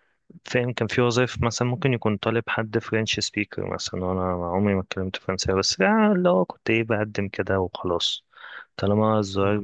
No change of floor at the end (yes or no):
yes